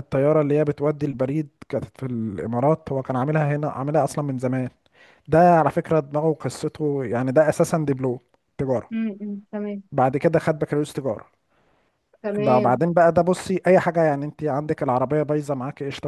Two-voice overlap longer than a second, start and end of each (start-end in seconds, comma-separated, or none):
none